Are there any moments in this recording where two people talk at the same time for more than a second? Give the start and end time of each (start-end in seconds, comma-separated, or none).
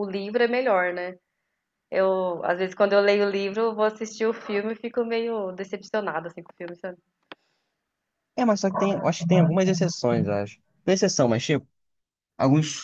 none